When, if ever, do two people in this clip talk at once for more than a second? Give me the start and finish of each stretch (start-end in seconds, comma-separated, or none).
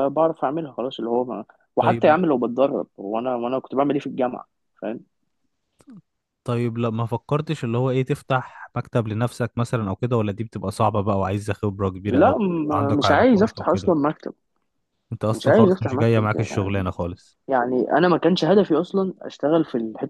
12.1-13.9, 15.3-16.8